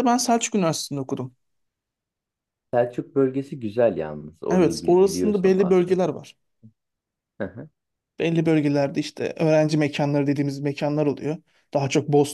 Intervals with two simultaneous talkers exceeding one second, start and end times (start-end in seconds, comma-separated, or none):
4.5-6.0